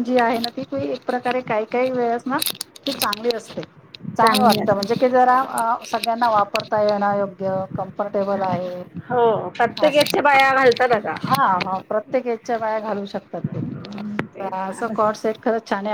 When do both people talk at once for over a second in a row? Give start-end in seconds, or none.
13.7-15.3